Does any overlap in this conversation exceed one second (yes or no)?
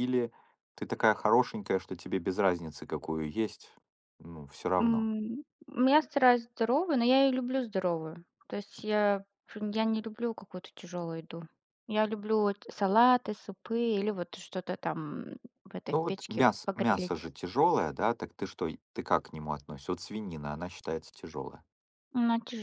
yes